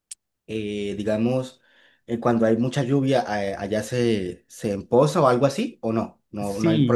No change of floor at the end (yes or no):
no